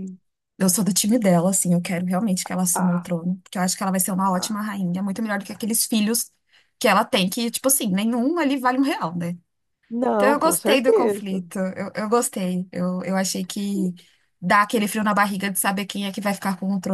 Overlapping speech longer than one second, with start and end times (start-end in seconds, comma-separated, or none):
10.2-11.4